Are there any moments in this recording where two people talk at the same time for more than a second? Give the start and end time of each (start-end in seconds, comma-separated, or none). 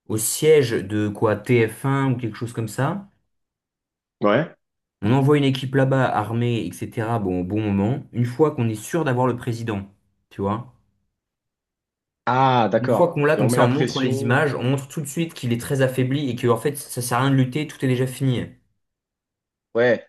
12.7-14.4